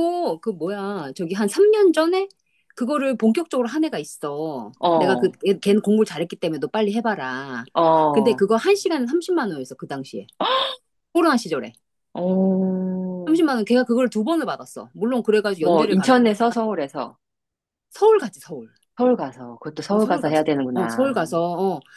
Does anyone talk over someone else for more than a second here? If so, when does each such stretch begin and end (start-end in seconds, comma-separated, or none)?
19.9-21.3